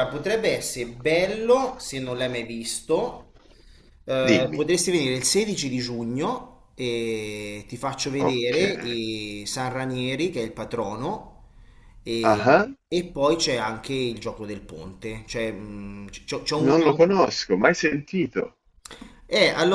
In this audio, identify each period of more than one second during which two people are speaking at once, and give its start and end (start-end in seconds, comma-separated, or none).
none